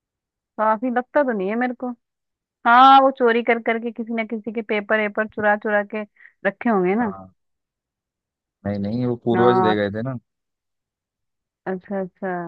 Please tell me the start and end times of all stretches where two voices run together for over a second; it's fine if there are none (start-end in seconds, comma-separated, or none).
none